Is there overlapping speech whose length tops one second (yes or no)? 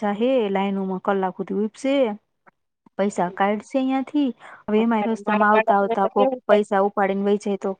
yes